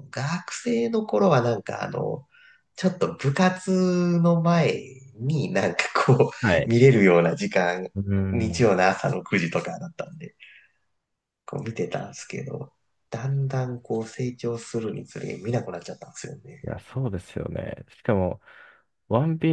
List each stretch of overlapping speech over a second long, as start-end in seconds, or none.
none